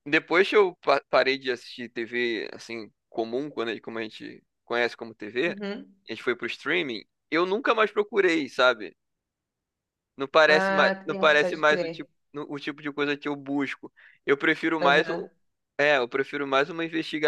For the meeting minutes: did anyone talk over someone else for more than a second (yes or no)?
yes